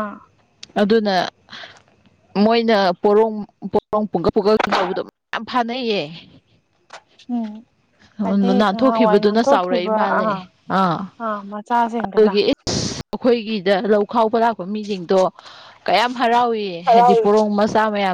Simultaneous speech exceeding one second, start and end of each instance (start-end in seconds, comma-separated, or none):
8.6-10.2